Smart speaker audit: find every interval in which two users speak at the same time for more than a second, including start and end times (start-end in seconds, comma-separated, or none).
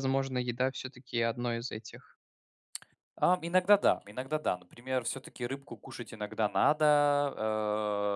none